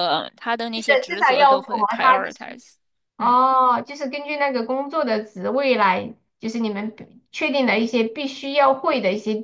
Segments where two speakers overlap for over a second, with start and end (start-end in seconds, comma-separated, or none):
0.8-2.6